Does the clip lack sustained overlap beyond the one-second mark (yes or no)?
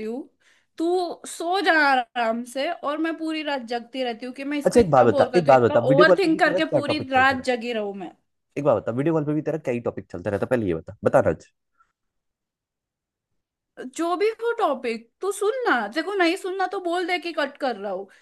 no